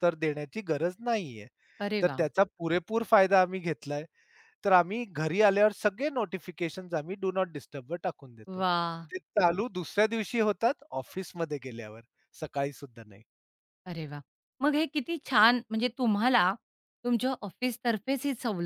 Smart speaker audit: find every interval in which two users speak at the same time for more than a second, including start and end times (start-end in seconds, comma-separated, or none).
none